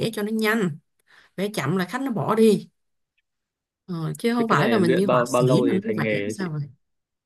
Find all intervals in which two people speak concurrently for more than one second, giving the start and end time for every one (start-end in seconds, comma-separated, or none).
4.4-6.5